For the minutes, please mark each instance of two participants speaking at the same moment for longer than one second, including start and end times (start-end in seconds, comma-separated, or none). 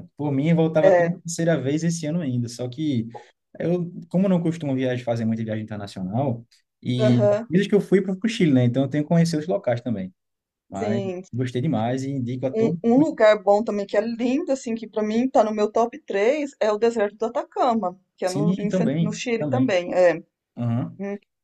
18.2-19.8